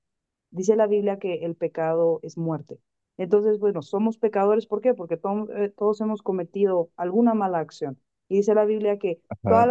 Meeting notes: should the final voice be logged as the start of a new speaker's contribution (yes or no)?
no